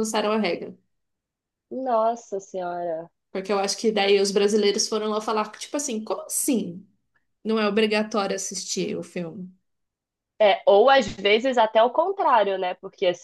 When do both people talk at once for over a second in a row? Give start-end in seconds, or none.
none